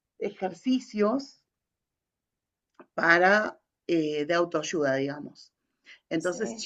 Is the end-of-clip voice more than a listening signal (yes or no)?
no